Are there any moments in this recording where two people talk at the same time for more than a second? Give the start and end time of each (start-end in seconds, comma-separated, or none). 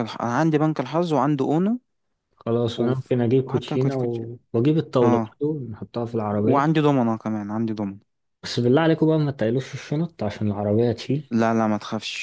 2.8-4.2